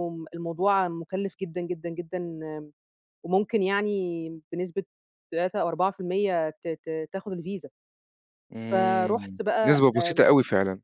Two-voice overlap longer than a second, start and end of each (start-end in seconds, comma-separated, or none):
8.7-10.2